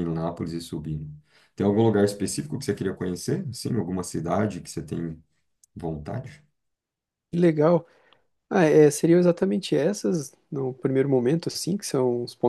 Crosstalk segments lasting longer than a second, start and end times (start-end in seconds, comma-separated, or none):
none